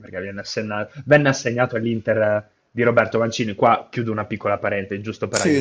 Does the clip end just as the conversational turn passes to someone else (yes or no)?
yes